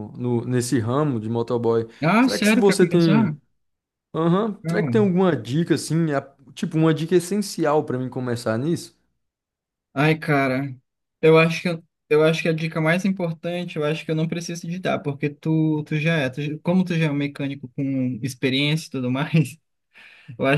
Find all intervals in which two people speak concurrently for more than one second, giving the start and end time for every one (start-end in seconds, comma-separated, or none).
2.0-3.4